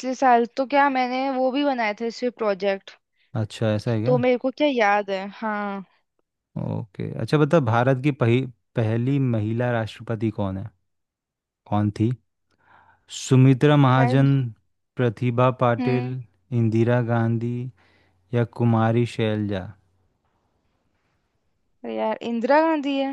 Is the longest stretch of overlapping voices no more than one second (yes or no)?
yes